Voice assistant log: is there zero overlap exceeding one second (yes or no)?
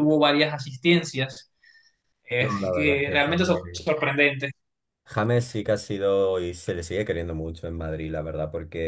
no